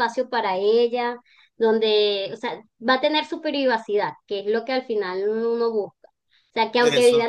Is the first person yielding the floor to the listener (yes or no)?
no